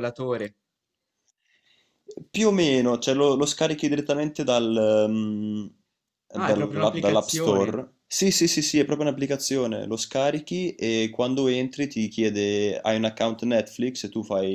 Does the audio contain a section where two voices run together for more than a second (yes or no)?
yes